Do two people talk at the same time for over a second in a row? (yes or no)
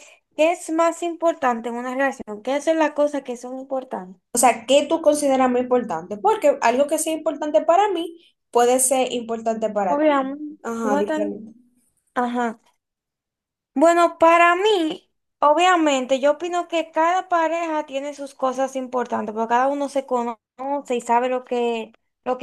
yes